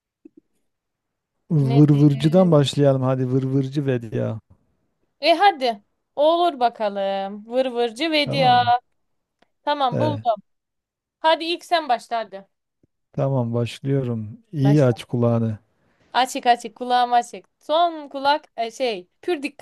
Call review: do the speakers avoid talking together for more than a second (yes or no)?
yes